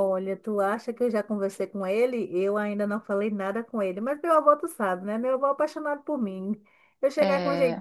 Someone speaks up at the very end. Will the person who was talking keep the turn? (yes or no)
yes